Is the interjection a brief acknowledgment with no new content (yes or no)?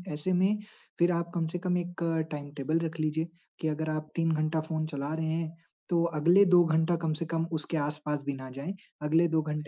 yes